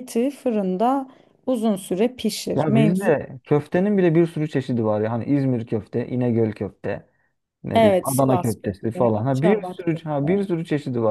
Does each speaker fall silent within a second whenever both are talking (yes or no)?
no